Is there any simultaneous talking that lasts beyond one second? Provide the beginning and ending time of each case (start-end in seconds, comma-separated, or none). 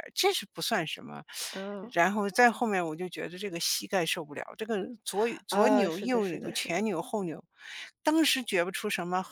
5.5-6.9